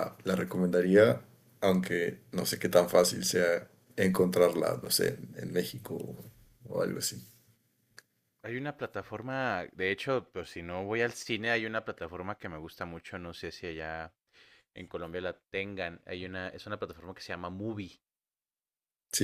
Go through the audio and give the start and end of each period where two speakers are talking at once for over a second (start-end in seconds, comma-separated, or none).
none